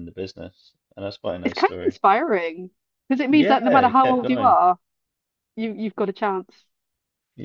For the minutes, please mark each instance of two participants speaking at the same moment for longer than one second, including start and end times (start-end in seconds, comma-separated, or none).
3.3-4.5